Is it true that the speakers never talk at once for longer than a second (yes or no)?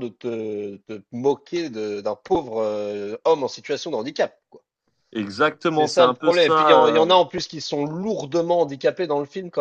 no